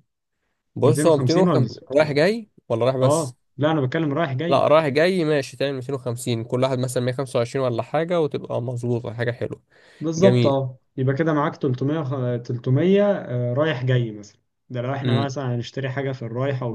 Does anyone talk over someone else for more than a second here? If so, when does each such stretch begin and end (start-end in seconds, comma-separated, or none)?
0.8-2.2